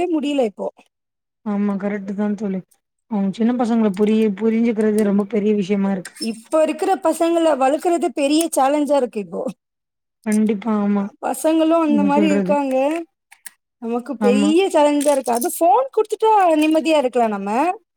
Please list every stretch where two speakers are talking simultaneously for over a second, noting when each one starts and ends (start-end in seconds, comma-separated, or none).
none